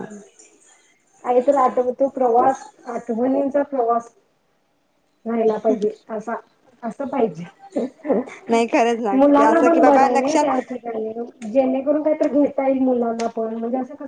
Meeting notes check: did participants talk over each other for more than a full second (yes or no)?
yes